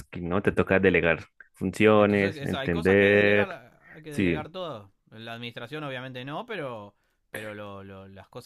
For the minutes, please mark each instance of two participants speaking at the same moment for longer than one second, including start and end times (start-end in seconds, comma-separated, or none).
1.9-3.5